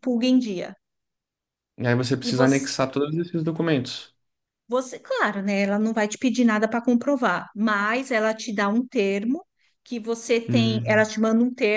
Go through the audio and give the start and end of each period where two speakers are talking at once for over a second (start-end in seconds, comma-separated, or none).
none